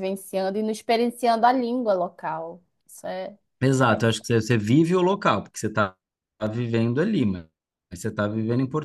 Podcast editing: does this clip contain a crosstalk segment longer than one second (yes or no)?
no